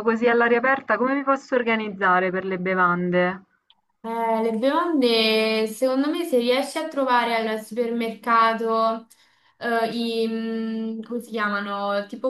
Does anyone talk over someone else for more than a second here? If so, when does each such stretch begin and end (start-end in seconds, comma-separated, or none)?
none